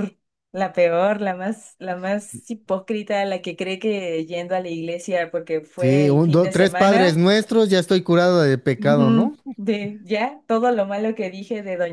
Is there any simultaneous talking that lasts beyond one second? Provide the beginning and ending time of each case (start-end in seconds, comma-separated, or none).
5.8-7.2